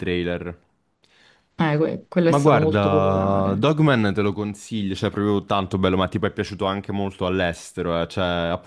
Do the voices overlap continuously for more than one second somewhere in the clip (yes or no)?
yes